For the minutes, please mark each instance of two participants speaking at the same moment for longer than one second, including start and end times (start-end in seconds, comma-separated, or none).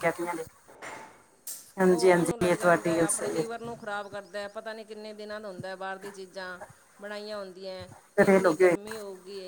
1.9-3.7